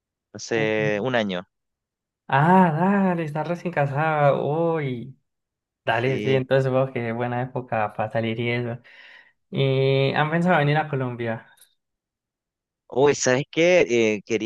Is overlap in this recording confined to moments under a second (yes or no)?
yes